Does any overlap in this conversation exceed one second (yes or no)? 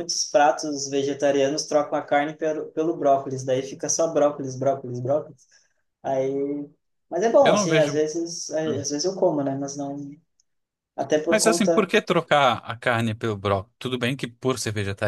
no